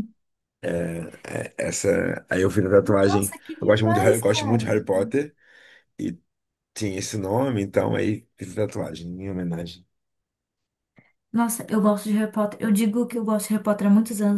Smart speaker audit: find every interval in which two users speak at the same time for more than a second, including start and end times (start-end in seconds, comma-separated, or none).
3.0-4.7